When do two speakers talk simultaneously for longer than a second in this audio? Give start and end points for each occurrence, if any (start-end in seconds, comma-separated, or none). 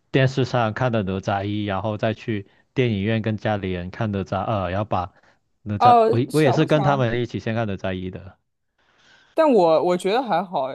5.8-7.1